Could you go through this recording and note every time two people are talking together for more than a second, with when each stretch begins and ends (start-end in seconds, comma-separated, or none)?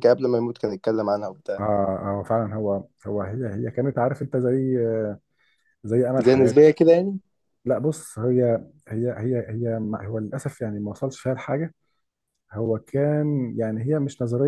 none